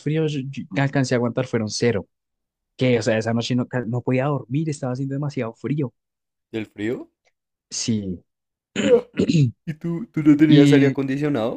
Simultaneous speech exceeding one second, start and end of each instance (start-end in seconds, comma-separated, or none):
none